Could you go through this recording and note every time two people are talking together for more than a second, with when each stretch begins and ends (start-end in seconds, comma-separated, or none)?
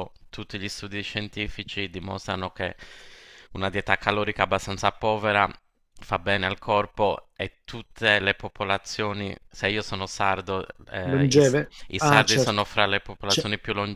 11.1-12.6